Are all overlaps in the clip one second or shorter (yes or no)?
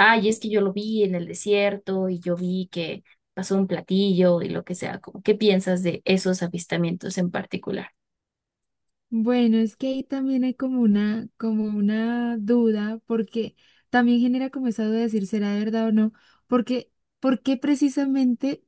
yes